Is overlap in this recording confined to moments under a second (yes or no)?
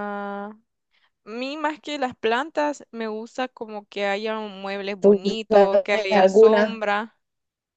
no